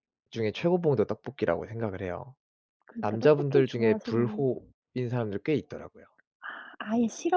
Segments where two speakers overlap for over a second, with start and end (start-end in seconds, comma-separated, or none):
3.0-4.5